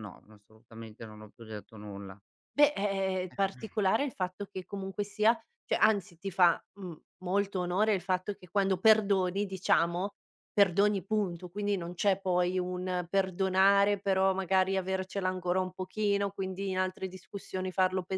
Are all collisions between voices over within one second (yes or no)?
yes